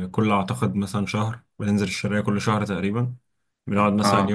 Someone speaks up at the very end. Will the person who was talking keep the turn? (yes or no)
yes